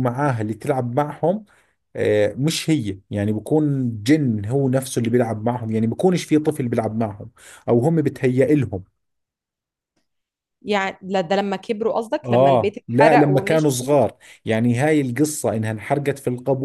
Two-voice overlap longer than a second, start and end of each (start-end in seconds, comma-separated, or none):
12.2-14.0